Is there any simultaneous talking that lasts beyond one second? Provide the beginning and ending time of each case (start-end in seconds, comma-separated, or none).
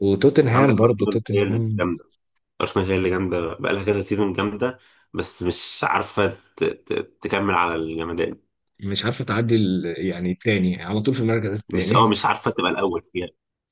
0.5-1.9